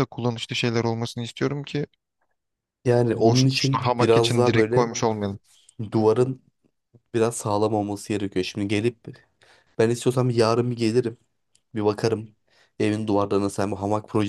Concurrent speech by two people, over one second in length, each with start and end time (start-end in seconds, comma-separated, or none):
3.1-4.9